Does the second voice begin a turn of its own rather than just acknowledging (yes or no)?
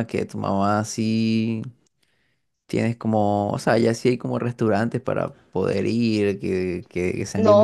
yes